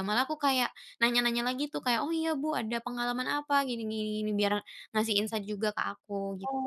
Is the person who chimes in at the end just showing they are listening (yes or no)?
no